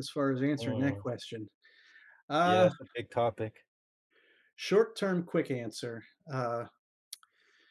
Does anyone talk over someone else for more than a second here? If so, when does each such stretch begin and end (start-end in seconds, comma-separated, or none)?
none